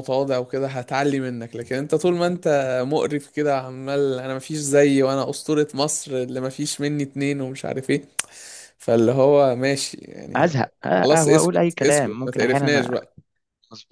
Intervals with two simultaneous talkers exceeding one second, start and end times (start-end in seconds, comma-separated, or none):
10.3-13.0